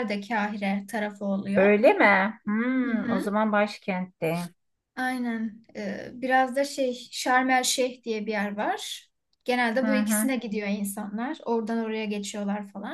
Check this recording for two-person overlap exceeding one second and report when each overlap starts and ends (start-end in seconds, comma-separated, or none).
none